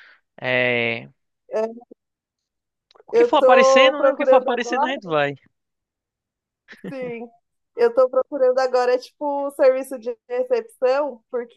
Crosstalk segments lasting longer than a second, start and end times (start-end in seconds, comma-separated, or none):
3.1-4.9